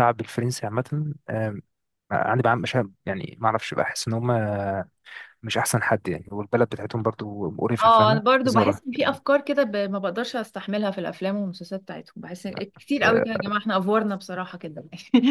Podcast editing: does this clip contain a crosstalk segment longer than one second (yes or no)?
yes